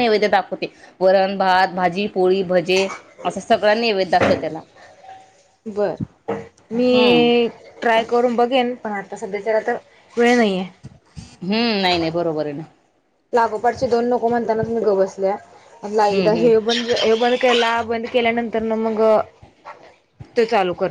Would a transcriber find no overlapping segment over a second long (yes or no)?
yes